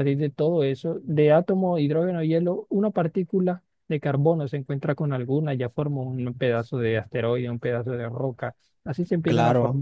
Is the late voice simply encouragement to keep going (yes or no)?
yes